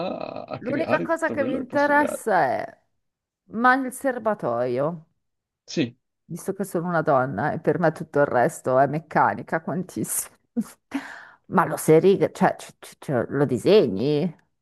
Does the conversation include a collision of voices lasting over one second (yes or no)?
yes